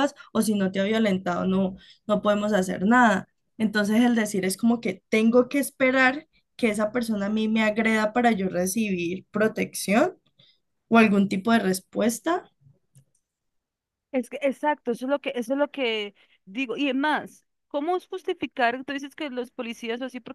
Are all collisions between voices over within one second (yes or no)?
yes